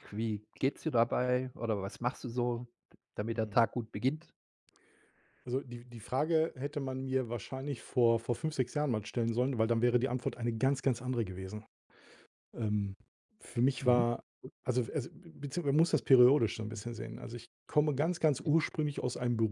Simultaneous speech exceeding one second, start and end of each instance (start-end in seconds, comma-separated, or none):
none